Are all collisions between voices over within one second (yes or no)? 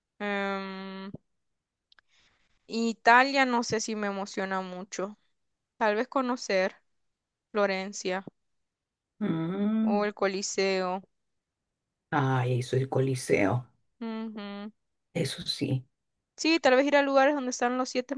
yes